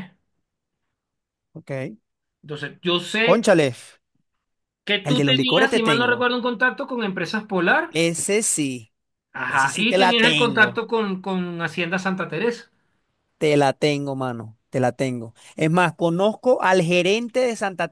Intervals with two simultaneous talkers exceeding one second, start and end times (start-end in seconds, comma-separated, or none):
5.0-6.3, 9.5-10.8